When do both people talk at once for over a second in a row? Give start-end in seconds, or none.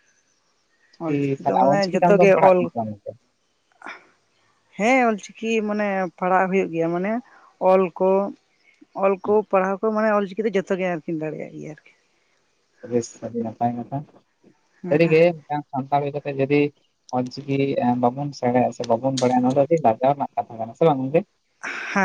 1.0-2.7